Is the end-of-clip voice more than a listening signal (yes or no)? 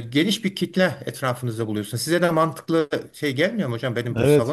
yes